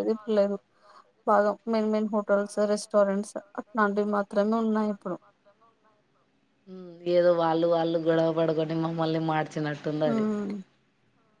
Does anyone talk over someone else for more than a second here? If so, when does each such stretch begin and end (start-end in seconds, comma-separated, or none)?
none